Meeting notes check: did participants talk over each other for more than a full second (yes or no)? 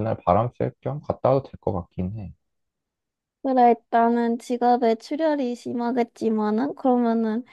no